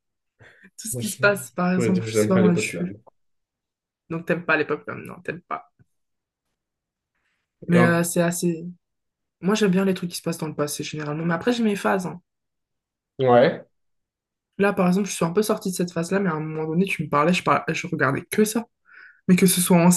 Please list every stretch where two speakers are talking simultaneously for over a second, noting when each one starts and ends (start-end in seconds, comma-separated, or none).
1.0-2.8